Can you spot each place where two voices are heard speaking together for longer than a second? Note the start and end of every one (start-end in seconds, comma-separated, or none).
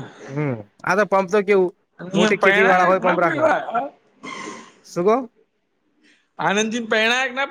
2.1-3.4